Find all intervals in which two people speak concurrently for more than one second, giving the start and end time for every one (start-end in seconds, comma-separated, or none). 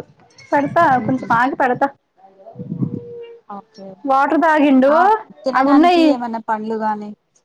none